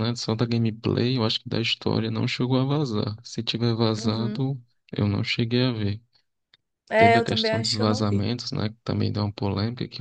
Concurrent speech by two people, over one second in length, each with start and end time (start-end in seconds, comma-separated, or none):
7.0-8.2